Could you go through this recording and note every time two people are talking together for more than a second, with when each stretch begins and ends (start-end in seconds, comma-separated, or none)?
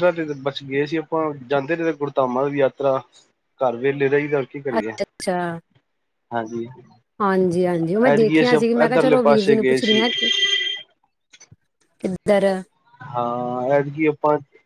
8.1-10.0